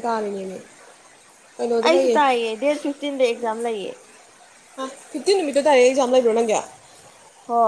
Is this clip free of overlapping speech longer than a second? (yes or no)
yes